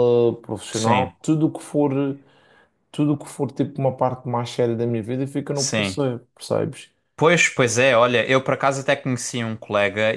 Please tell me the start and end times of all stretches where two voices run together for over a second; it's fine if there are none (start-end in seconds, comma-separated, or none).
none